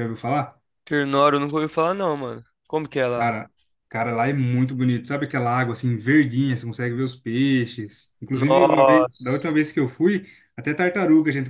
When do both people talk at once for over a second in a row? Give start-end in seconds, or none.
8.3-9.5